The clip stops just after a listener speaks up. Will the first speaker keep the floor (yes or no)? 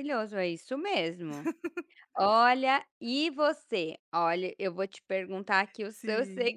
yes